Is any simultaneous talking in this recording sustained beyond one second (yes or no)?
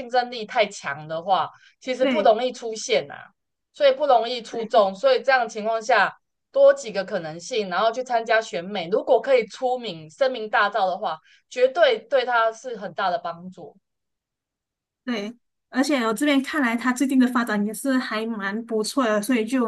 no